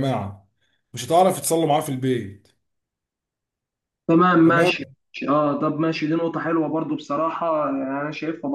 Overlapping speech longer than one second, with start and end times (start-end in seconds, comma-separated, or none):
none